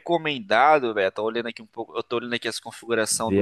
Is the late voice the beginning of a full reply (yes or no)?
no